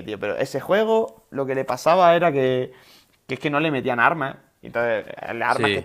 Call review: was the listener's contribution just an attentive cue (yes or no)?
yes